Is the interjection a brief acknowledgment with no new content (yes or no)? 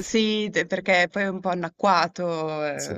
yes